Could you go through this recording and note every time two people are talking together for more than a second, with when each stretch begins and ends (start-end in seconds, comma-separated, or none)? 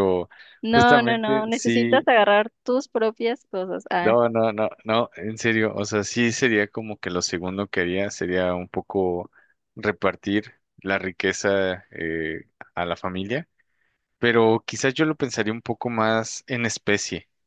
0.7-2.1